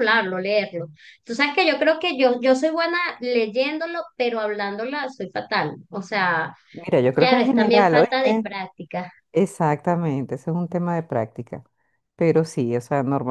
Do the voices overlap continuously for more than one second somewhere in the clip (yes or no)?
yes